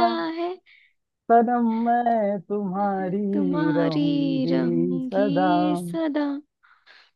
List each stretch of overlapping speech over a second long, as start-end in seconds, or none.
2.8-5.3